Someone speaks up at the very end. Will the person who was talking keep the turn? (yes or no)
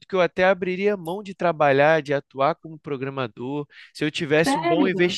yes